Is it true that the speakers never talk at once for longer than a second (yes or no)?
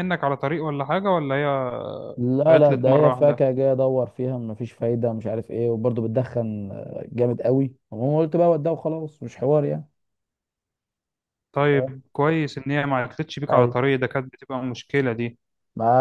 no